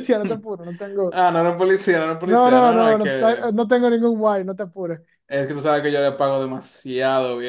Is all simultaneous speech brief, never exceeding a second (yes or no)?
no